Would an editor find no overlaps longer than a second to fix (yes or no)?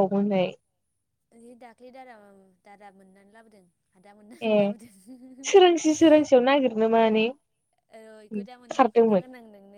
yes